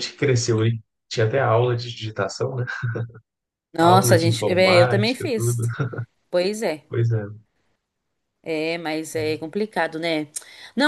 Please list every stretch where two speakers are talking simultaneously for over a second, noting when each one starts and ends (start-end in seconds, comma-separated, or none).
3.8-5.6